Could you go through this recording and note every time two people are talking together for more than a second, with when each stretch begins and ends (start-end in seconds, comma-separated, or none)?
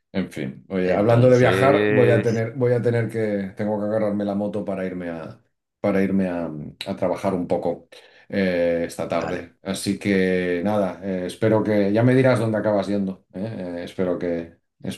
0.8-2.3